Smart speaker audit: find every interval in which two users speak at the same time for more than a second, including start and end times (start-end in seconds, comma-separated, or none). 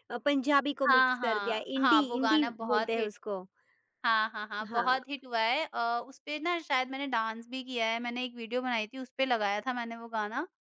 0.9-3.1